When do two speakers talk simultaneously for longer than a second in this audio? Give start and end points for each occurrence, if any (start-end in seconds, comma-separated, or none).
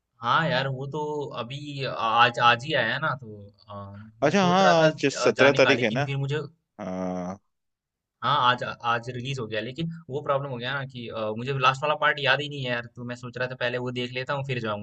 4.2-6.1